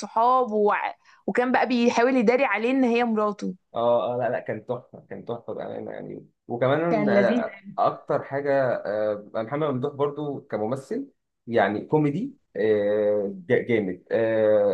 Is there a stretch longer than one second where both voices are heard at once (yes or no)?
no